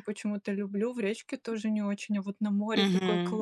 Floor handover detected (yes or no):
yes